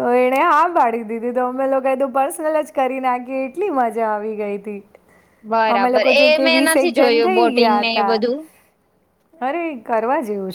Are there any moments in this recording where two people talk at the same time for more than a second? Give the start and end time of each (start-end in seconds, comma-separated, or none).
5.8-8.1